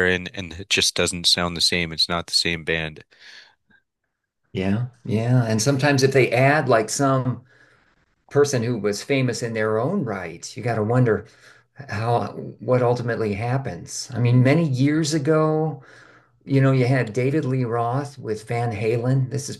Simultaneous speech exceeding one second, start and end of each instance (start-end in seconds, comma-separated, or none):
none